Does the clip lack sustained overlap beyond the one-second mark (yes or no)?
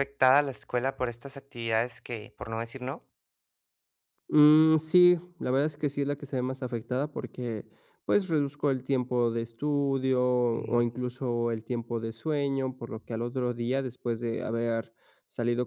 yes